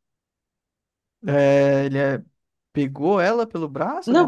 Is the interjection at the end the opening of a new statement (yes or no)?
yes